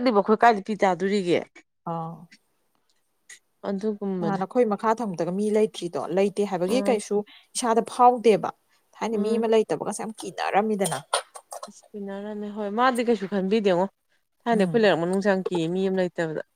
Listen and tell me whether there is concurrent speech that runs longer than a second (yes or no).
no